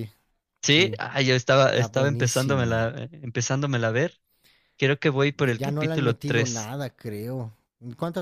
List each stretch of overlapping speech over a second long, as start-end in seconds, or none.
1.7-3.0, 5.4-6.7